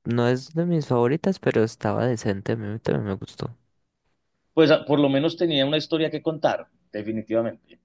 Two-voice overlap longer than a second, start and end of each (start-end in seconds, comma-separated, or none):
none